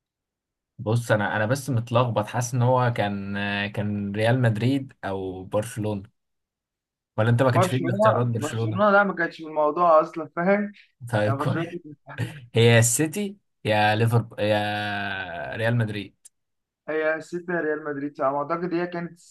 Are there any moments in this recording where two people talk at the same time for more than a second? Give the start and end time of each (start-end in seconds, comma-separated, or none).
7.5-8.8